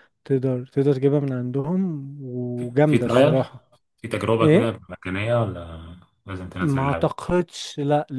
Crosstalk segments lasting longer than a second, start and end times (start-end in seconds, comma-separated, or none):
none